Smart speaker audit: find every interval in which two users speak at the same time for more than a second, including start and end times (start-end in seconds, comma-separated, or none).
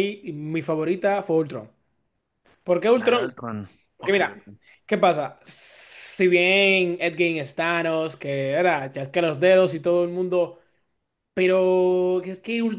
none